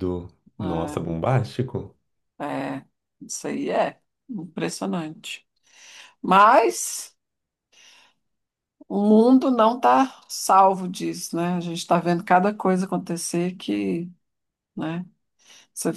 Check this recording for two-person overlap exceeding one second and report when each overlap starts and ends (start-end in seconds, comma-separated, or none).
none